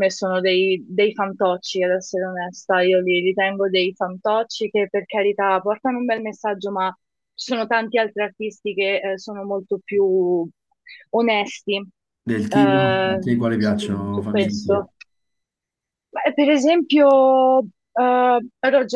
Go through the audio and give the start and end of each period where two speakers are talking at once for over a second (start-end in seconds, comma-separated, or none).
12.5-14.9